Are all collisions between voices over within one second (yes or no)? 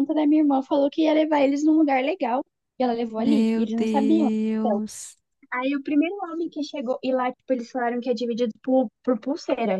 no